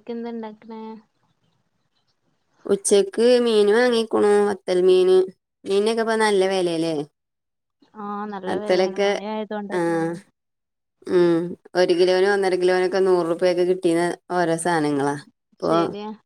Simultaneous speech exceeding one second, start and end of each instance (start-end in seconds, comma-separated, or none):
none